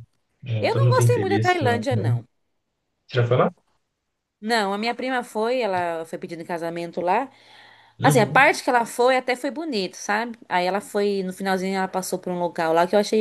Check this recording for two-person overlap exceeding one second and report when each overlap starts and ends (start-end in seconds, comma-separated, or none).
0.6-2.1